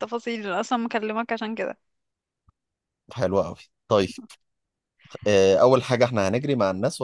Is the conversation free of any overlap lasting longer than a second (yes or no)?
yes